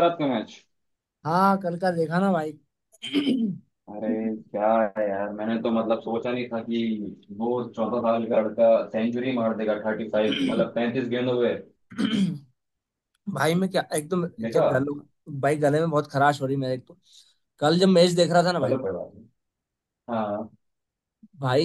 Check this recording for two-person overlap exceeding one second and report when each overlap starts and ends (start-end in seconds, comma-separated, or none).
none